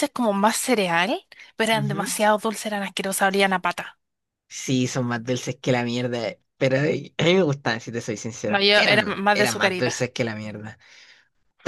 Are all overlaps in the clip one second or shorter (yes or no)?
no